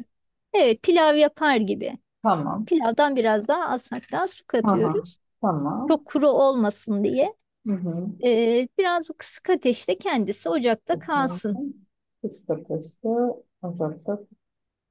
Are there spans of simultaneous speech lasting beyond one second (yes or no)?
no